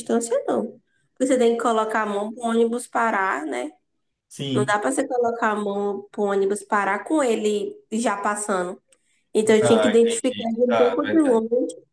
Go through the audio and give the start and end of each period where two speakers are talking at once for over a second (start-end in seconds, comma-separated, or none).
9.6-11.4